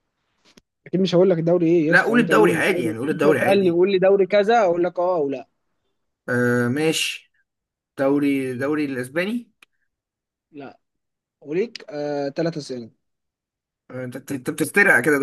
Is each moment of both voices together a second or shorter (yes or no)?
no